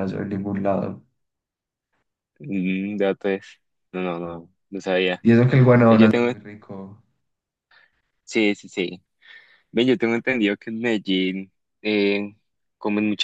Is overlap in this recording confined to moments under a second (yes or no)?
yes